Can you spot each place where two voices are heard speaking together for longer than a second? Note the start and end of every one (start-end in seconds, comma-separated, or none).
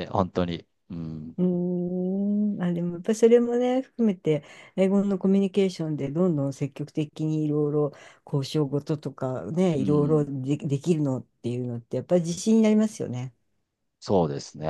none